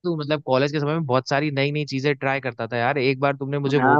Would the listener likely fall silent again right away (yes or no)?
no